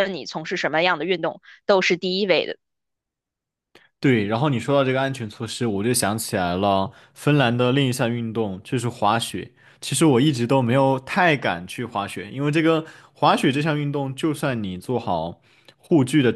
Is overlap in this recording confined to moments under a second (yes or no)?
yes